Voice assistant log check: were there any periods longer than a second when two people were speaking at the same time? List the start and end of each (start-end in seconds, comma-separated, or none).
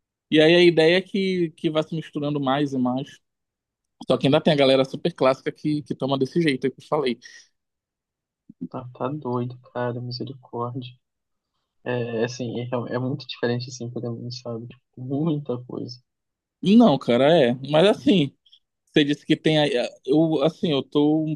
none